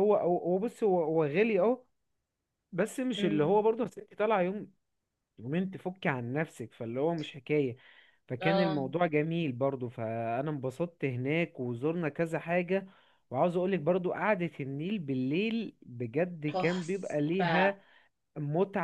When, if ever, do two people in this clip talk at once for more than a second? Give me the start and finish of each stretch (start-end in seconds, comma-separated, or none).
16.5-17.7